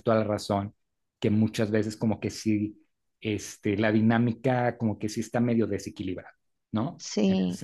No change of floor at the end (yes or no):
yes